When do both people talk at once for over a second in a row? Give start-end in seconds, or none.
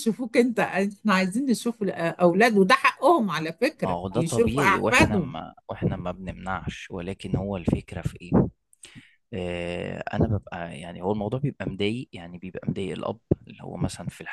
3.8-5.3